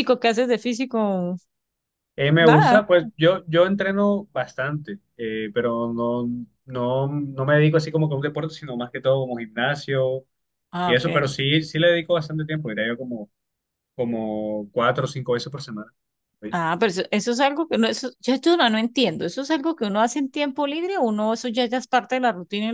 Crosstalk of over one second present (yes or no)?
no